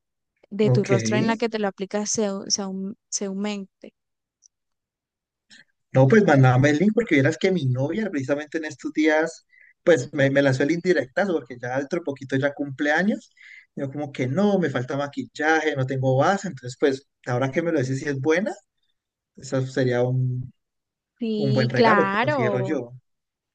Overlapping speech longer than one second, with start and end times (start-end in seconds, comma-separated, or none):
21.4-22.8